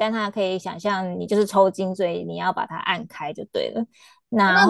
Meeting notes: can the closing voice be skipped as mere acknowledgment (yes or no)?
no